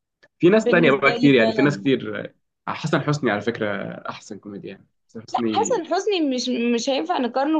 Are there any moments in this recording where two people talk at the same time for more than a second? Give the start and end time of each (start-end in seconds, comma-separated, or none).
0.6-1.9